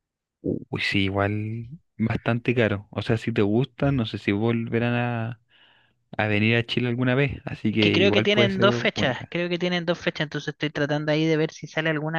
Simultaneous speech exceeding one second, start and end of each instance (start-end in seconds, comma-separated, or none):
7.7-9.3